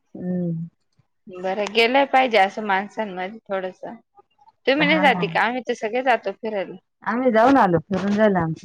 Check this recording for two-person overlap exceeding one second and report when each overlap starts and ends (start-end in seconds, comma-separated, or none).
none